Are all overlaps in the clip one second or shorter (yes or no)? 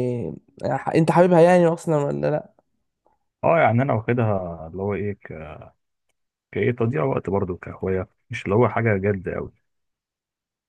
yes